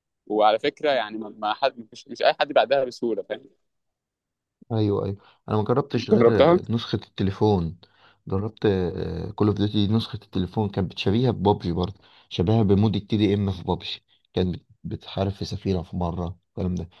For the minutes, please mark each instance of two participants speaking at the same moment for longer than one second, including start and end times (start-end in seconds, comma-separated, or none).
none